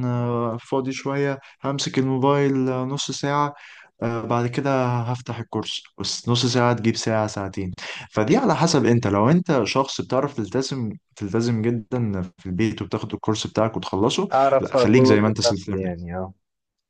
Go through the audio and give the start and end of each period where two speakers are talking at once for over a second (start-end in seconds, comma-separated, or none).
14.3-15.9